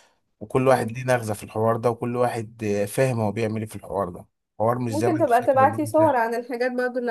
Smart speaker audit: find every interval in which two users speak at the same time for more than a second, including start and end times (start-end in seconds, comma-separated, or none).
4.9-6.2